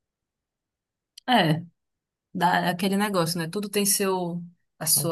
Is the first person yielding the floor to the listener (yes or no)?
no